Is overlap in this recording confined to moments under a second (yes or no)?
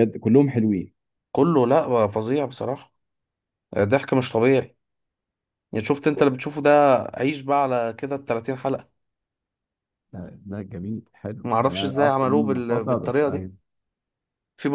no